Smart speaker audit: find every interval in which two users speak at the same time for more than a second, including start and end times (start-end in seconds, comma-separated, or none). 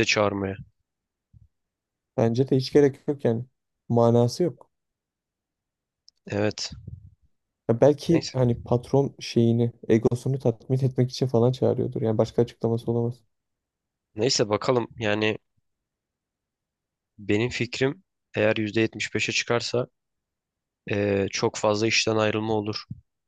none